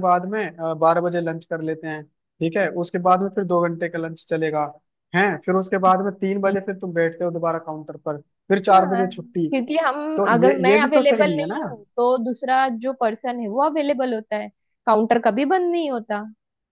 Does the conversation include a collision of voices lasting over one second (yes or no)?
yes